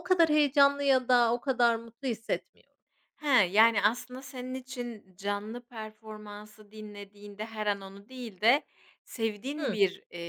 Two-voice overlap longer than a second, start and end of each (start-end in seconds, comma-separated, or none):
none